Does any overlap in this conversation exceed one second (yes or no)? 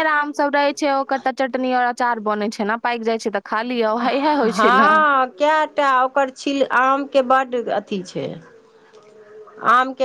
no